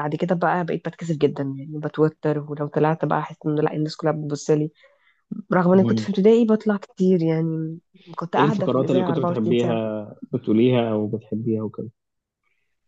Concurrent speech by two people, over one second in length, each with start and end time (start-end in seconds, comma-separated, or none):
8.4-9.8